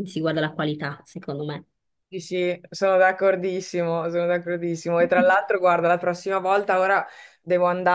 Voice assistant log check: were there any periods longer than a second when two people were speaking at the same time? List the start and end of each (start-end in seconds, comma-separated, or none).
none